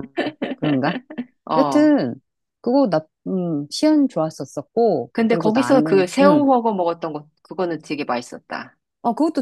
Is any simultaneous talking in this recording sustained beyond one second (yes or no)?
yes